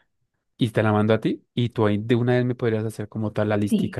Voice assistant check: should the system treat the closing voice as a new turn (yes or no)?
yes